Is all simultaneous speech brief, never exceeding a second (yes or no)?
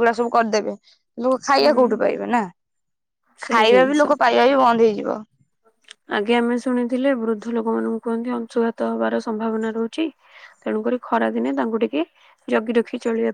yes